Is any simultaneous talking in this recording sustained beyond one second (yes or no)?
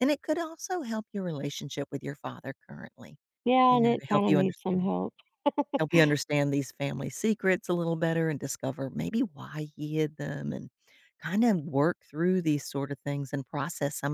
yes